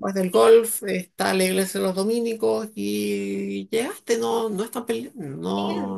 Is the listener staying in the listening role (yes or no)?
no